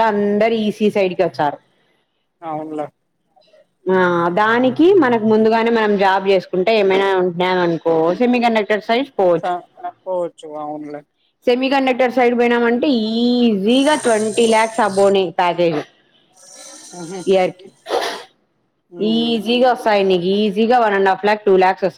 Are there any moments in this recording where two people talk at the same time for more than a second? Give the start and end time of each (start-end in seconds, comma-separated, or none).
none